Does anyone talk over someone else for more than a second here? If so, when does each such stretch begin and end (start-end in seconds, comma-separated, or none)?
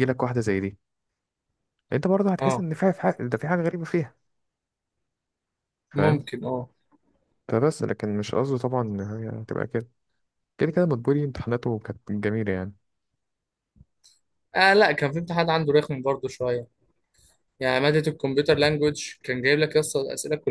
none